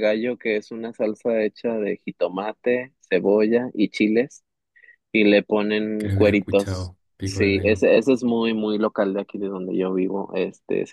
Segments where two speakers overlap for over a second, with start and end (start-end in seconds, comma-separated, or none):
6.0-7.8